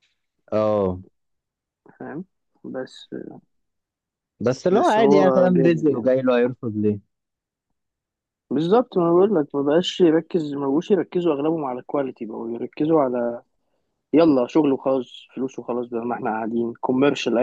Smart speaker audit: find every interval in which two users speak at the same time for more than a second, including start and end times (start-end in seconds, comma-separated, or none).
4.7-6.1